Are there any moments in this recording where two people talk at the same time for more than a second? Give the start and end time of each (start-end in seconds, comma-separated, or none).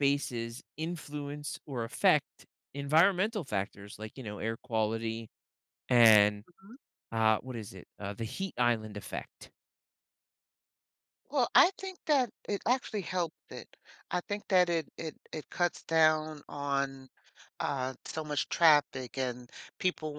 none